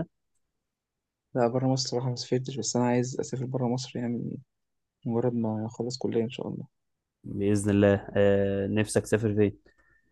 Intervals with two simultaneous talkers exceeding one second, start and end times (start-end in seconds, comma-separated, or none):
none